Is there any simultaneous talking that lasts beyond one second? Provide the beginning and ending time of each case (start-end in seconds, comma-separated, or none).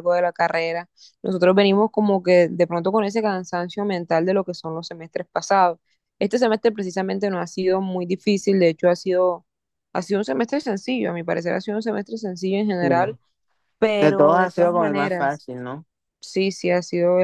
14.0-15.4